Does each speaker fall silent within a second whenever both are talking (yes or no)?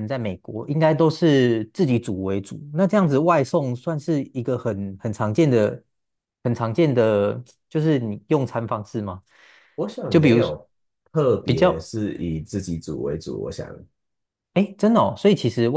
yes